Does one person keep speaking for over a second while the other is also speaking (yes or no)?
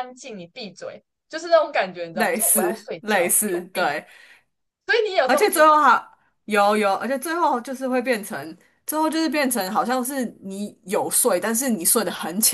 yes